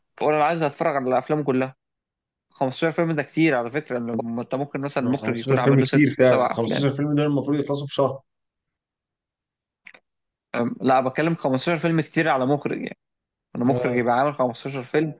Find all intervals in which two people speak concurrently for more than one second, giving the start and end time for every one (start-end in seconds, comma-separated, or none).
5.0-6.9